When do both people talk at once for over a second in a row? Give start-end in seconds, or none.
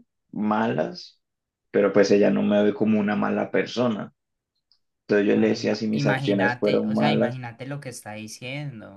5.3-7.4